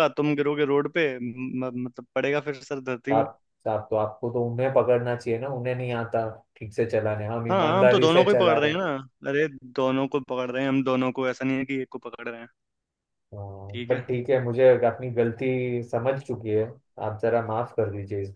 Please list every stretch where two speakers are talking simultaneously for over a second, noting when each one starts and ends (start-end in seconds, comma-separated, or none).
7.5-8.8